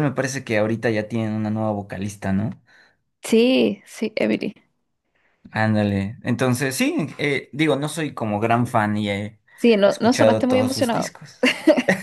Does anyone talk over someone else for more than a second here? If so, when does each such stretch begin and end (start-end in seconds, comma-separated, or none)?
9.9-11.1